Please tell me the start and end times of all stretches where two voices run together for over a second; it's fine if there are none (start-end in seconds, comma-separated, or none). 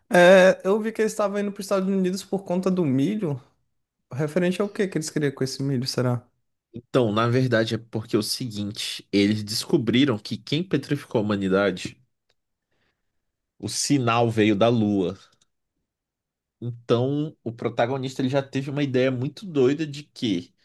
none